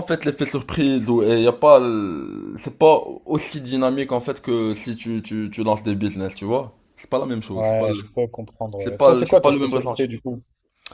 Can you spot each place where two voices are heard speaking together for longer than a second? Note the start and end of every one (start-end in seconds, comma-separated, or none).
8.8-10.1